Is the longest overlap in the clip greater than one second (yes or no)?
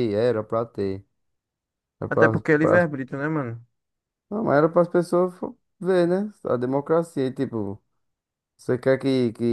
no